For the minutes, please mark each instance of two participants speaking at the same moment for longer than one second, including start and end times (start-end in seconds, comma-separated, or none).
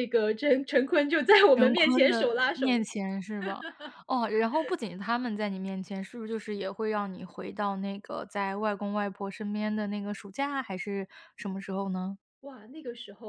1.5-2.8